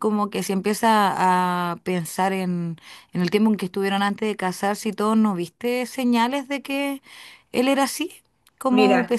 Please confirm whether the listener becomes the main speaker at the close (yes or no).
no